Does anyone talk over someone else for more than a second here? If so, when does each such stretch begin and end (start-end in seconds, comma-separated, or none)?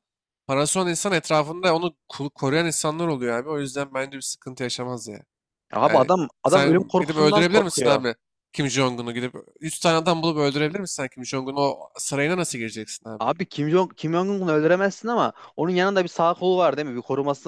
5.8-8.0